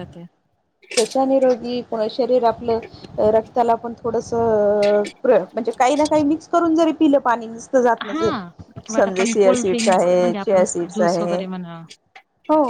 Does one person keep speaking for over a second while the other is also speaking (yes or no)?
yes